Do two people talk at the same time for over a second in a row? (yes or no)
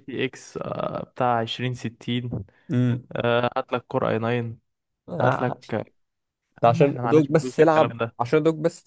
yes